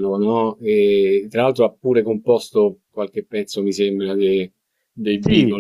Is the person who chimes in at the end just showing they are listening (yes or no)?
no